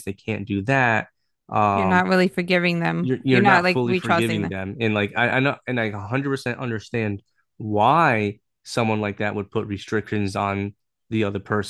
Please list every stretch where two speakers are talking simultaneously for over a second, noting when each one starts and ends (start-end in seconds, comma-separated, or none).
3.0-4.5